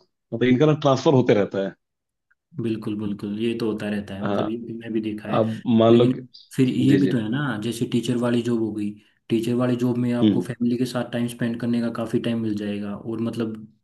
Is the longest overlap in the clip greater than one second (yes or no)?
no